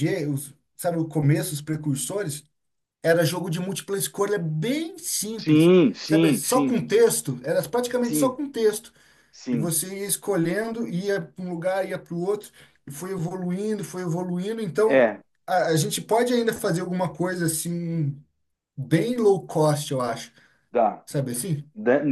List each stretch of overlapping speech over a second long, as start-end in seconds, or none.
5.4-6.8